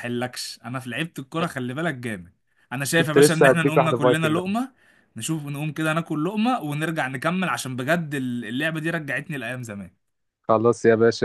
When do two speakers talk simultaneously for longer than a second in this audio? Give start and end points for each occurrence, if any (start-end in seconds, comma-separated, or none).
3.0-4.4